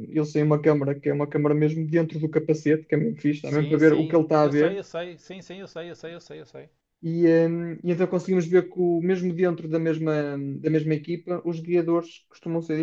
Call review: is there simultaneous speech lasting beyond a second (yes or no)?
yes